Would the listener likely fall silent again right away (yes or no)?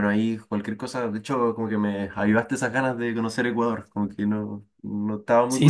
no